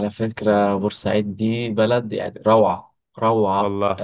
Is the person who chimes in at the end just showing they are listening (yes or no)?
yes